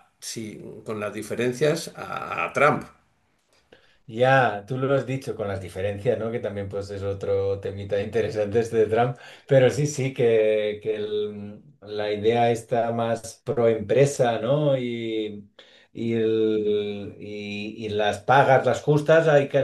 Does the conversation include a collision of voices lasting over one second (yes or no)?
no